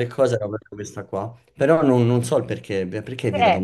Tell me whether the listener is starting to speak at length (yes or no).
yes